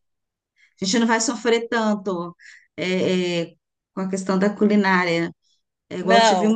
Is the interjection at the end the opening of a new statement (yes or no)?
no